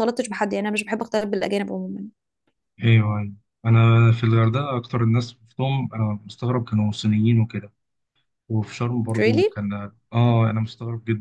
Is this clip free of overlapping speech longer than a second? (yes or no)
yes